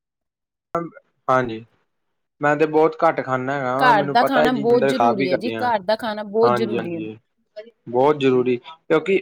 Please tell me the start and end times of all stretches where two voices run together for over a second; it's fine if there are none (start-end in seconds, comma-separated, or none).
3.8-5.6